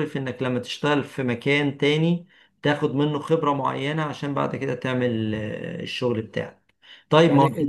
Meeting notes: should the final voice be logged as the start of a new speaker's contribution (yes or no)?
no